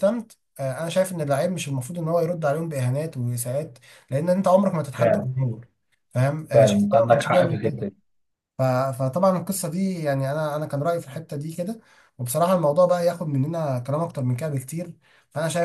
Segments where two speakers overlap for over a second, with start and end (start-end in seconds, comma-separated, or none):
6.5-7.9